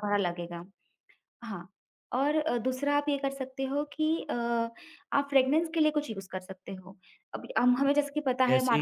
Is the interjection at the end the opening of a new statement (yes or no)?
no